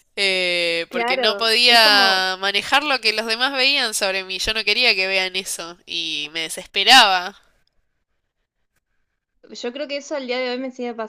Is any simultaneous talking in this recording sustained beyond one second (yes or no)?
yes